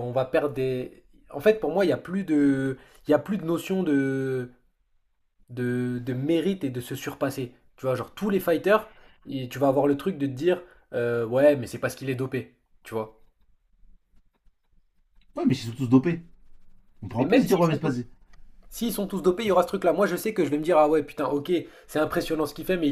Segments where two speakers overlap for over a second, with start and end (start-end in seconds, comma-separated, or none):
none